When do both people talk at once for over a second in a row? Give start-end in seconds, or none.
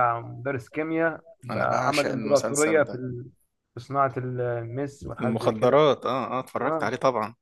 1.5-3.0